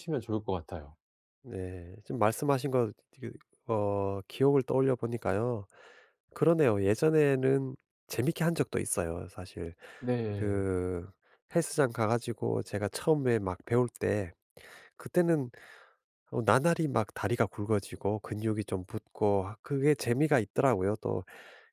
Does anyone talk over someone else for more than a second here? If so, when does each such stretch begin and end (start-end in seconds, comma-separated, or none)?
none